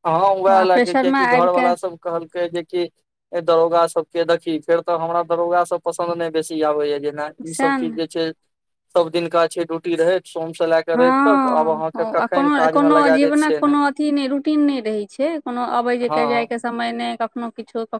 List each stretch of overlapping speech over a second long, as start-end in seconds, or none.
11.0-13.8